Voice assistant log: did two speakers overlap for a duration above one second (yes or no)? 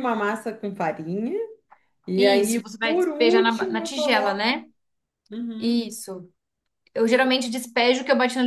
yes